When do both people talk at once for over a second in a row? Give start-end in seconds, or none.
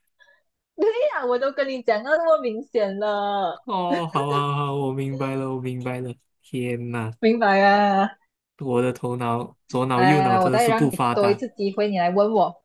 9.9-11.4